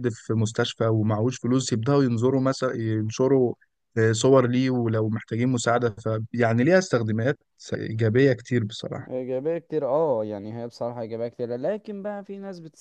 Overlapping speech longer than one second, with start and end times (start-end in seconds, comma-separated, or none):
none